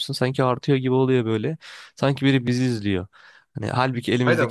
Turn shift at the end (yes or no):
yes